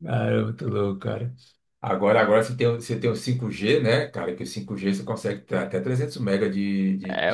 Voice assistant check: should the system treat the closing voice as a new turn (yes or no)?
yes